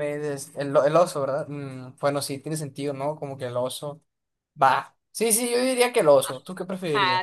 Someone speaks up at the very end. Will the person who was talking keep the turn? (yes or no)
no